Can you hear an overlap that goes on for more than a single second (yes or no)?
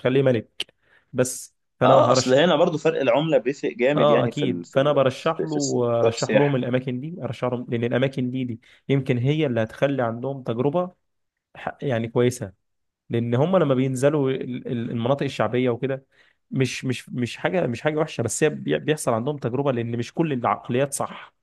yes